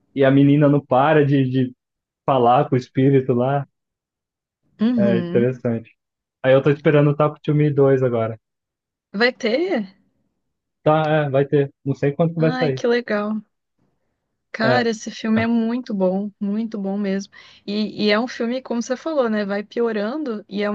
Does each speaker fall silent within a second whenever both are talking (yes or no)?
yes